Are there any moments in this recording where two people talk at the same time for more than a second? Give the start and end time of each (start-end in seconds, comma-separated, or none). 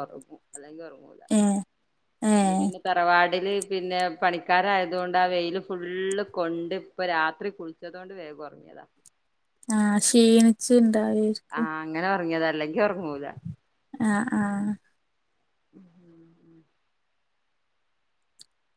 none